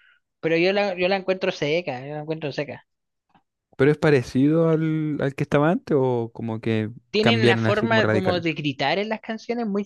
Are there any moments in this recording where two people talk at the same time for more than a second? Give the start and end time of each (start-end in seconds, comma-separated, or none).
7.1-8.4